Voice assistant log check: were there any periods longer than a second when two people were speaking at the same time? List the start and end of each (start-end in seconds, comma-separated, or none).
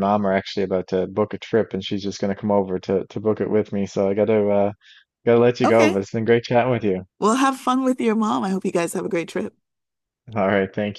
none